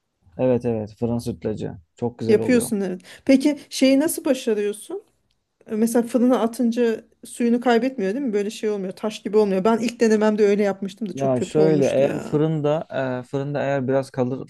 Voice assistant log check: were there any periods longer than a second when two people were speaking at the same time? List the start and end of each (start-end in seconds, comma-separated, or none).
11.1-12.4